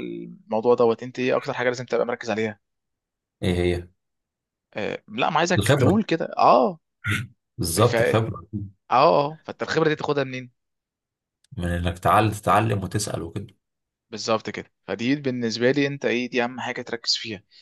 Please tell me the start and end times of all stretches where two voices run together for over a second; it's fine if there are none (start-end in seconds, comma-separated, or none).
none